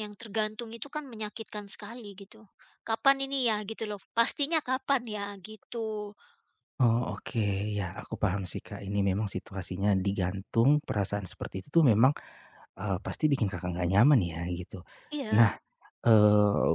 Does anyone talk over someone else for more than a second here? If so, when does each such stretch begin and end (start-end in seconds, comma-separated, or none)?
none